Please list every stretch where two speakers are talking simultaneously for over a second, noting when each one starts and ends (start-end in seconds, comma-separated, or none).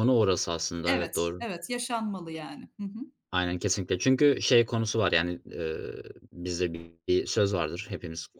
none